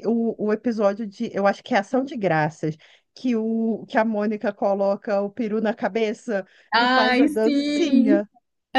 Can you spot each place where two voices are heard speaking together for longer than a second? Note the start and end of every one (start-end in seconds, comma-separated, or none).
6.7-8.2